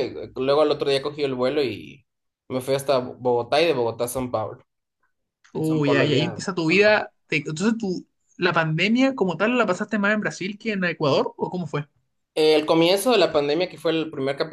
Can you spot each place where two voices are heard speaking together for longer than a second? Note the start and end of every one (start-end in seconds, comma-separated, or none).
5.5-7.0